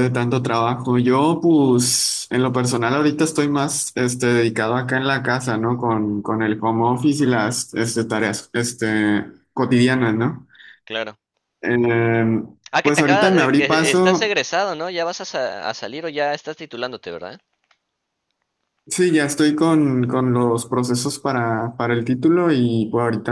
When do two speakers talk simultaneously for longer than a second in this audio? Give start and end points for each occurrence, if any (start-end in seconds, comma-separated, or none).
12.8-14.4